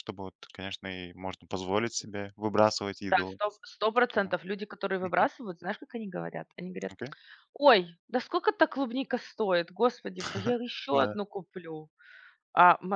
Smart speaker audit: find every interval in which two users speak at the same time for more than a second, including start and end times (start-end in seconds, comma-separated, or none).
none